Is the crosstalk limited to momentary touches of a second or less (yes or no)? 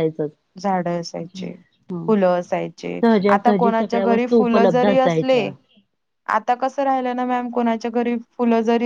no